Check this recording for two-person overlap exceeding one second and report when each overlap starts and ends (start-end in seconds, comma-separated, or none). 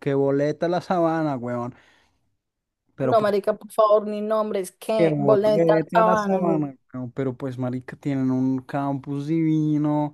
5.0-6.6